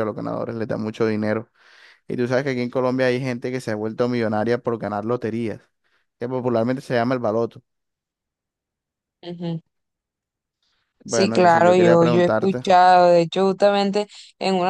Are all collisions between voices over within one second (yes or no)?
no